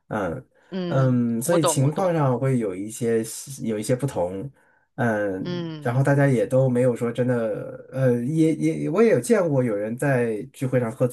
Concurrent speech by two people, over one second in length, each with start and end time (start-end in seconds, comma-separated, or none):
0.9-2.2